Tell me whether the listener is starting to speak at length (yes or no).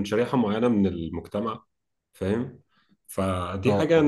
no